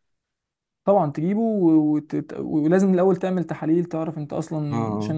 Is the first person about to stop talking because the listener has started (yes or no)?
no